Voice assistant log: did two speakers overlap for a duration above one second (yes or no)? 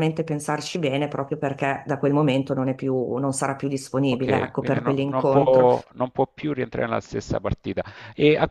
yes